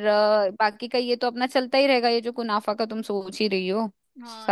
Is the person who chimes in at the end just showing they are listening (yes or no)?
no